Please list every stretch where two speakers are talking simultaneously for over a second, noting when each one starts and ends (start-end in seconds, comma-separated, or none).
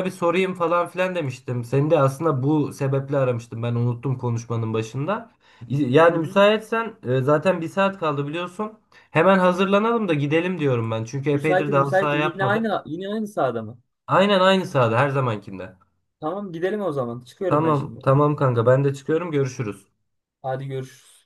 11.3-12.7